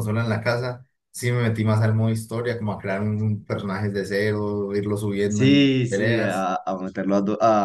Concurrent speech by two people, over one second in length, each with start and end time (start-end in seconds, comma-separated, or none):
5.3-6.5